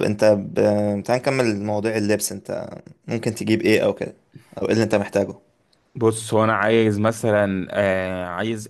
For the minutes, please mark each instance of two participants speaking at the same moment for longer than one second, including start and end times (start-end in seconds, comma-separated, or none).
none